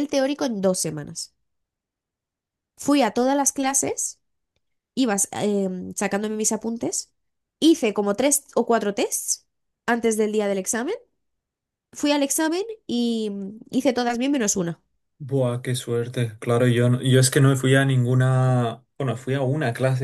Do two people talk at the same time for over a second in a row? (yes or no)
no